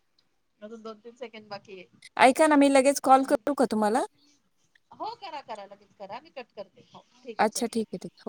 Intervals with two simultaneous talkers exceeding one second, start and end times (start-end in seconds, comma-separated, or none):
none